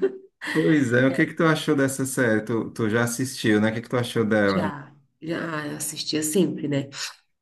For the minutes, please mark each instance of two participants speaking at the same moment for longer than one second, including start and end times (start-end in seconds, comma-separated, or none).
none